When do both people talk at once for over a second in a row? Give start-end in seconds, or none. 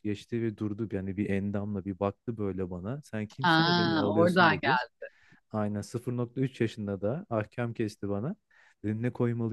3.4-4.8